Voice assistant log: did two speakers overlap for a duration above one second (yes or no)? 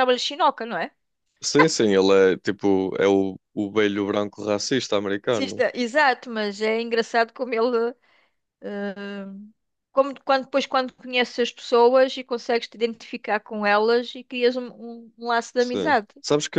no